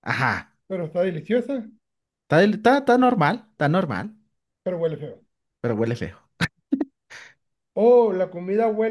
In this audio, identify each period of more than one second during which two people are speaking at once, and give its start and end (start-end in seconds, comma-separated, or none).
none